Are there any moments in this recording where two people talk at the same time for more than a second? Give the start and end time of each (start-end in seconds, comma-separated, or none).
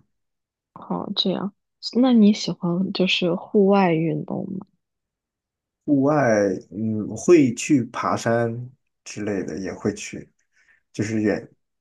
none